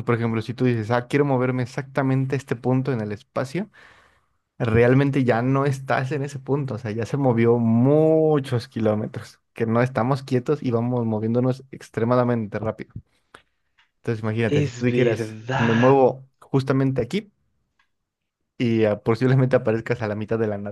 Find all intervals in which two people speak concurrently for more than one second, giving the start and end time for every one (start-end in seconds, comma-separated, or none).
14.4-16.0